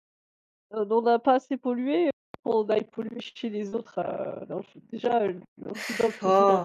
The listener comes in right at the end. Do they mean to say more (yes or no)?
yes